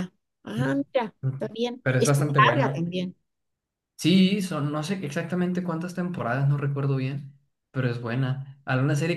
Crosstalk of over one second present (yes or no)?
yes